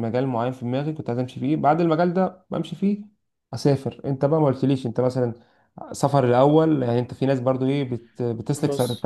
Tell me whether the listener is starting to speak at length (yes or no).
no